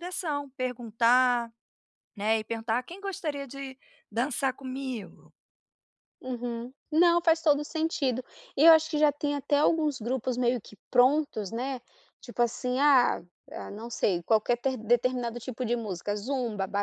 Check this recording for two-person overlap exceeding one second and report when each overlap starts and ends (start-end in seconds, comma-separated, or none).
none